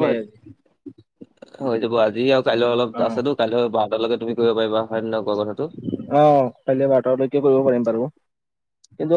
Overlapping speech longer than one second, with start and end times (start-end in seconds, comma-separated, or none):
none